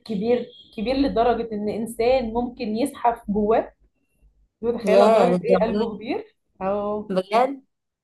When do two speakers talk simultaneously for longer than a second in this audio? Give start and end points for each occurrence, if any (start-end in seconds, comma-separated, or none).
4.8-6.1